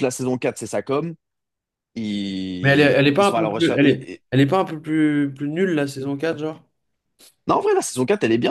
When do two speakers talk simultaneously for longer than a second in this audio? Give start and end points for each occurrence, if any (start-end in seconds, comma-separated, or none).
2.6-4.2